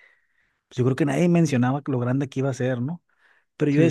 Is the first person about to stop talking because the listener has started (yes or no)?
no